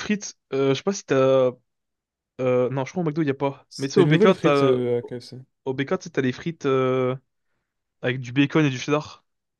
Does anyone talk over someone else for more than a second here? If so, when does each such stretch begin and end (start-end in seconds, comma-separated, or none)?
3.7-5.4